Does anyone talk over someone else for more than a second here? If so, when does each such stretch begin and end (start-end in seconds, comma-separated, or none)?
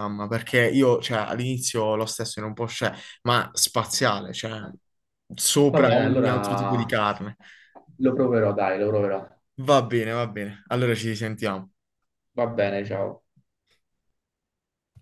5.7-7.0